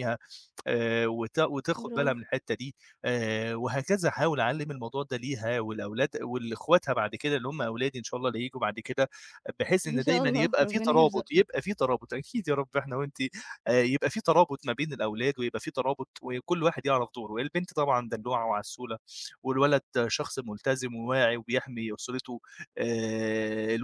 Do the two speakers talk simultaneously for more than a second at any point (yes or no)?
yes